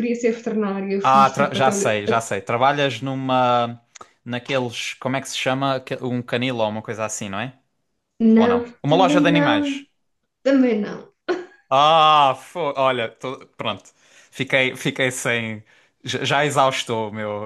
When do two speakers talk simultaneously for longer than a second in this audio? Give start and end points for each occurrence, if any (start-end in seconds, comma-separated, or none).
1.0-2.2, 8.4-9.8